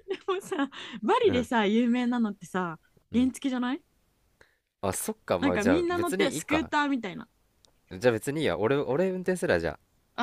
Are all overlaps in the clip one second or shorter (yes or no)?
no